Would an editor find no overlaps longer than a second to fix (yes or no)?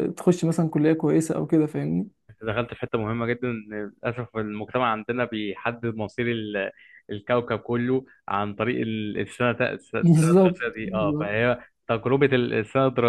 no